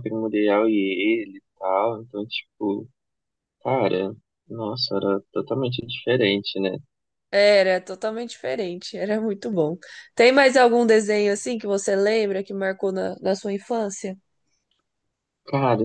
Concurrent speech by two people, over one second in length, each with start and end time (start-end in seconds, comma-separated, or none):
none